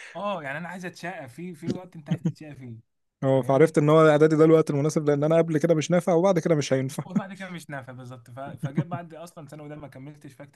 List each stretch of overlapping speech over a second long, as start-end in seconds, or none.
none